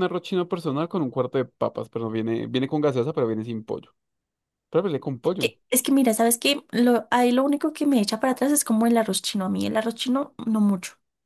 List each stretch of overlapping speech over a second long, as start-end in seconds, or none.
none